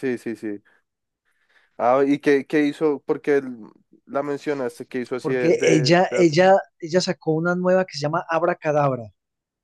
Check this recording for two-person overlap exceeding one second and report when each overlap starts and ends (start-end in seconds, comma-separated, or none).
5.2-6.4